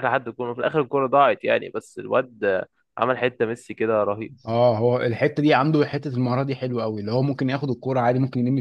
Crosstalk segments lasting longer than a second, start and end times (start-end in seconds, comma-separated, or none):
none